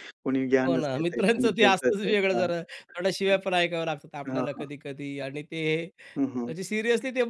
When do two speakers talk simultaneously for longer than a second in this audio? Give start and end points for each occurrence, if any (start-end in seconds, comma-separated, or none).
0.7-2.5